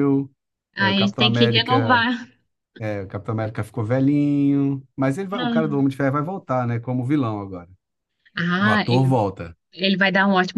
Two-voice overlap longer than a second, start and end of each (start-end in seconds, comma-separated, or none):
0.8-2.1